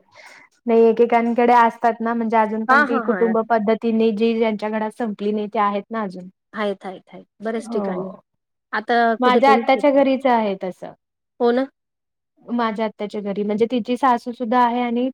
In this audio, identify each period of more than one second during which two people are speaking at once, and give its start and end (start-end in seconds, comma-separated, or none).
none